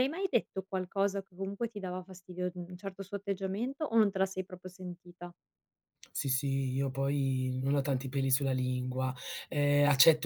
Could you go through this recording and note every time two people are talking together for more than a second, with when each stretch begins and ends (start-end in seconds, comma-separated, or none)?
none